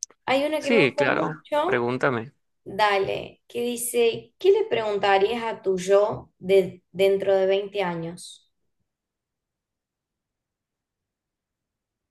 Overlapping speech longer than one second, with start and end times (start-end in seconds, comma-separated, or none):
0.6-1.9